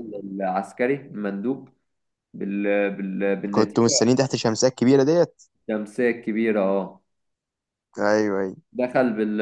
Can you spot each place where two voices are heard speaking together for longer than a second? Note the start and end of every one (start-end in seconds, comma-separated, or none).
none